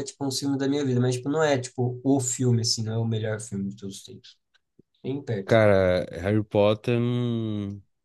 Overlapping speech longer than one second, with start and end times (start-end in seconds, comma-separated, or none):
none